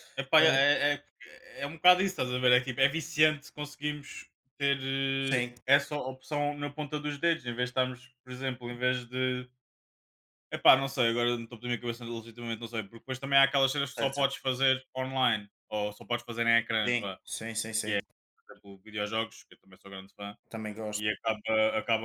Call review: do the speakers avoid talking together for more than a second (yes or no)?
yes